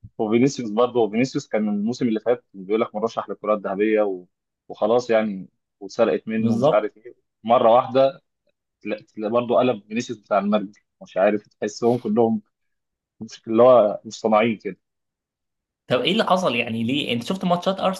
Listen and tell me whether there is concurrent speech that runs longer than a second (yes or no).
no